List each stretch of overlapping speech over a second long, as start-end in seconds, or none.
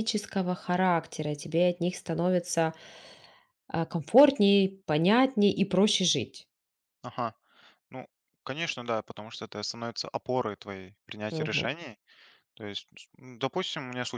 none